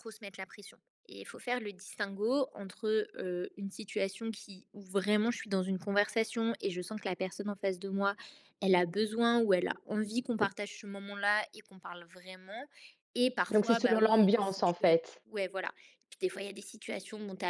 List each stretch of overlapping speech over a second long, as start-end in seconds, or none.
13.5-15.2